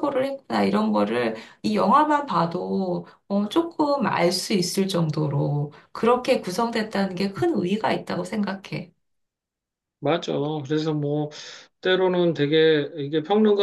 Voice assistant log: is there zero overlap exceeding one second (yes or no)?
yes